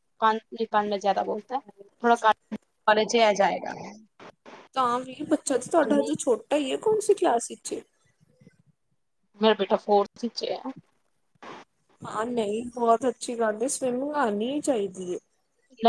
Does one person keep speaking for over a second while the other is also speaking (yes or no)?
no